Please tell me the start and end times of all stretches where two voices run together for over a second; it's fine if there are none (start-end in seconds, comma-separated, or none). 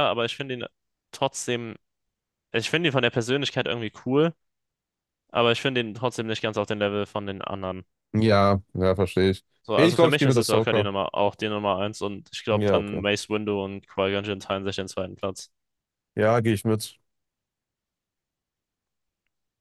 9.6-10.9